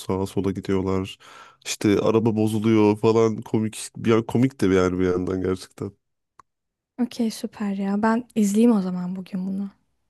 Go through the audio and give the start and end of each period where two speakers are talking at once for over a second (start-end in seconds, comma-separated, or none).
none